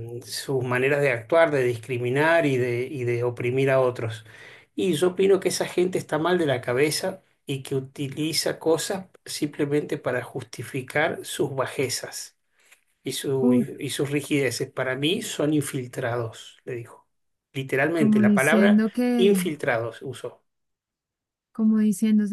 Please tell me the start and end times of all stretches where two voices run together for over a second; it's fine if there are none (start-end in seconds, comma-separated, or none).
17.9-19.4